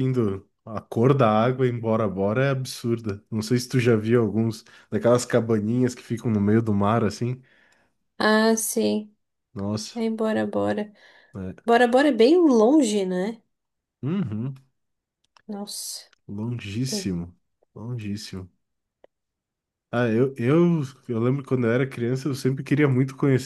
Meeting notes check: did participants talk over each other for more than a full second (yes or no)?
no